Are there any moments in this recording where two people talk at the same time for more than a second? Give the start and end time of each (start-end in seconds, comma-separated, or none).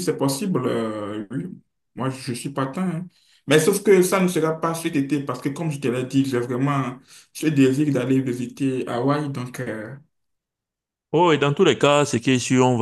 none